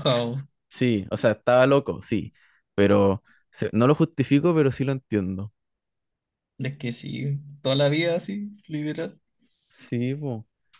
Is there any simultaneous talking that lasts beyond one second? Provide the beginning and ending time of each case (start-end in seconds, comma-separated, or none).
none